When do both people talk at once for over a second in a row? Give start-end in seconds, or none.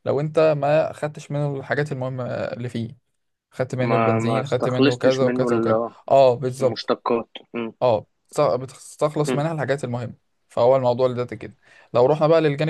3.9-5.9